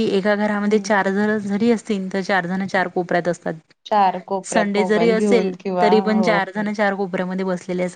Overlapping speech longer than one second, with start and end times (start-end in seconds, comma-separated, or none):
3.9-6.3